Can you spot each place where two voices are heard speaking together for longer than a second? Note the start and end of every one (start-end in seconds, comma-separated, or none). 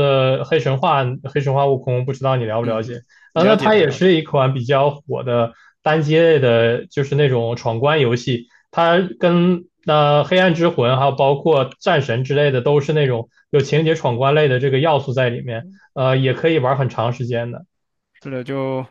2.6-4.1